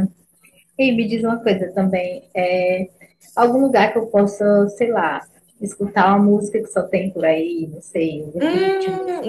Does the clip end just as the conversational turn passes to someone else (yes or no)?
yes